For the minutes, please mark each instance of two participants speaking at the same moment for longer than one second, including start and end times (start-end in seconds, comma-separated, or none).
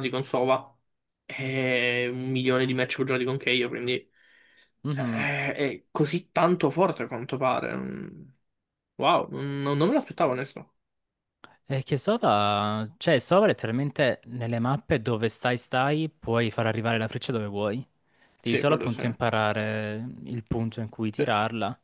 none